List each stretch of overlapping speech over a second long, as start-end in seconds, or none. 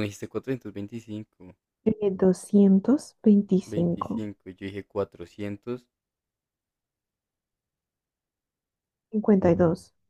none